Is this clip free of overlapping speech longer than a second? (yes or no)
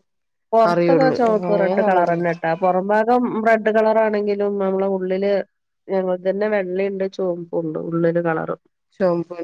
no